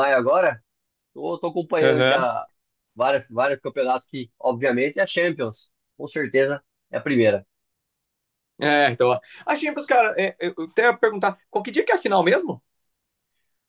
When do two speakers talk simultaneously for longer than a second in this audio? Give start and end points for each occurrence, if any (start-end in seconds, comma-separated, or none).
none